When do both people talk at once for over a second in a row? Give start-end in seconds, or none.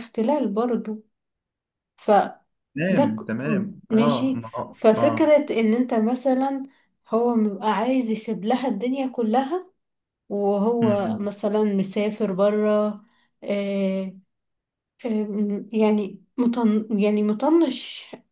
3.2-5.4